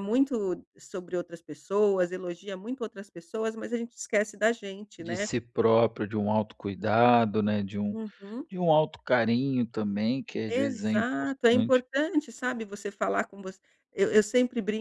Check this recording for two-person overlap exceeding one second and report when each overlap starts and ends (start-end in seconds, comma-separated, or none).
10.5-11.8